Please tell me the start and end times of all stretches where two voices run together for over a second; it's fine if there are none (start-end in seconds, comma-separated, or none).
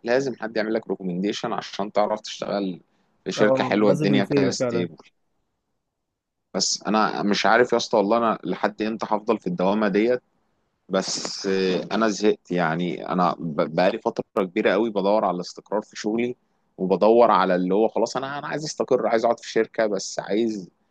3.4-4.9